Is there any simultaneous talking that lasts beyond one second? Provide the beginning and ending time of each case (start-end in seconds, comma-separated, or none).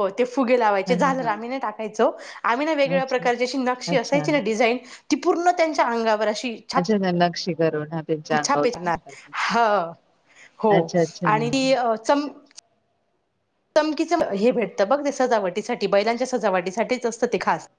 none